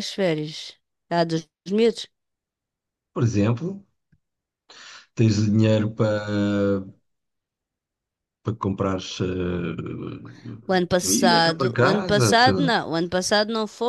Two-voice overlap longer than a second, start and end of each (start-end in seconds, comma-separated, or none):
11.0-12.7